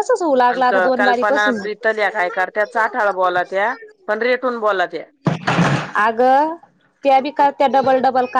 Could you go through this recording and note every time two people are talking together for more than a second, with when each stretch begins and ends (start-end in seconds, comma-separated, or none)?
none